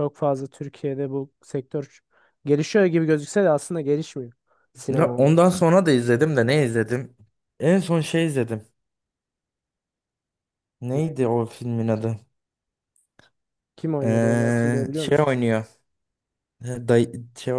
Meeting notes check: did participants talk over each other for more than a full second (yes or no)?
yes